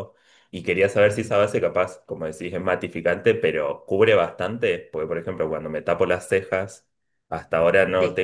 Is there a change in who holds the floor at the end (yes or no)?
no